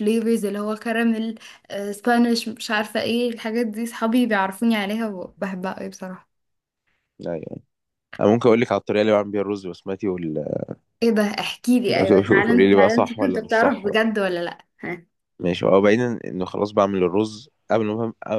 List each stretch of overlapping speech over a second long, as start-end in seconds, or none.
12.4-14.0